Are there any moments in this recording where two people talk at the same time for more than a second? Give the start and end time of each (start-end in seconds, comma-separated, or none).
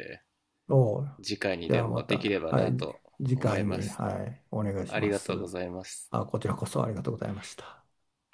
1.7-4.0